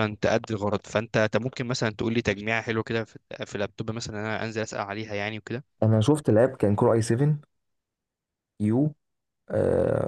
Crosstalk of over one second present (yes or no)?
no